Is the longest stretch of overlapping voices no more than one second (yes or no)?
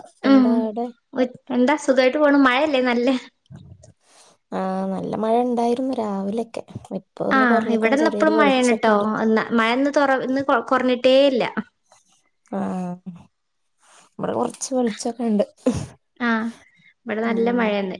no